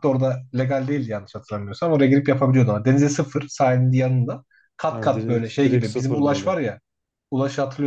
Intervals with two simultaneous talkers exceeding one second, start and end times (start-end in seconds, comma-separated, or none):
4.9-6.5